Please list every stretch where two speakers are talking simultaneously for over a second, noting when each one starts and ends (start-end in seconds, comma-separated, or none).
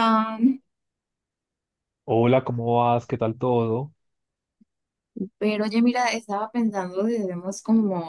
none